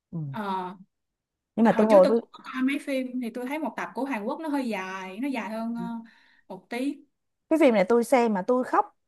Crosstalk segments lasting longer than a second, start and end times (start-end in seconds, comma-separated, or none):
none